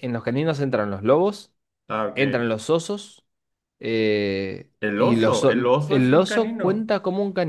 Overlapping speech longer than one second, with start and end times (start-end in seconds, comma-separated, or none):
4.8-6.9